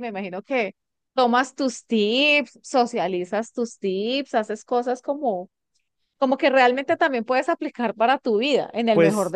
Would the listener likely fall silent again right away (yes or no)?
no